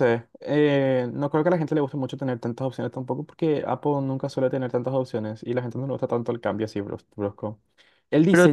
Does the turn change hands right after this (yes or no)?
no